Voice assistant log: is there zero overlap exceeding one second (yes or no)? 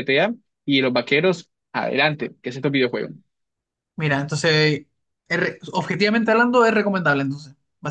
yes